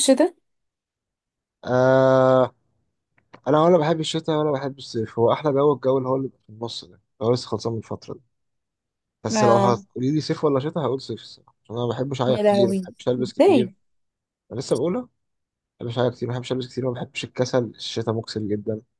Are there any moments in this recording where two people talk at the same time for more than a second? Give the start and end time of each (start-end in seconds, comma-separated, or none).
12.3-13.7